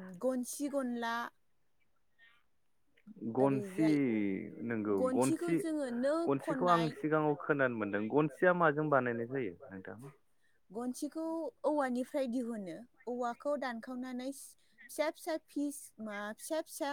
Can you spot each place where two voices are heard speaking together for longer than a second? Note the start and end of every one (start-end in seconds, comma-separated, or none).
none